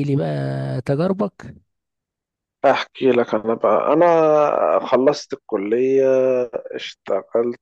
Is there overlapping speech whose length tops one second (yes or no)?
no